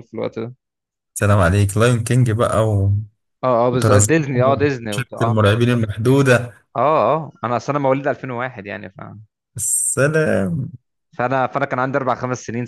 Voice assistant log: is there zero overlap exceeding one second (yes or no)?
no